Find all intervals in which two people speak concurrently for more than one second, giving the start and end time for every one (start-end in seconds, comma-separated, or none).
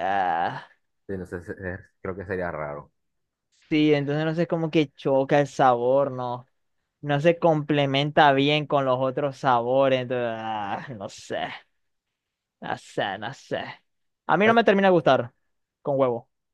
none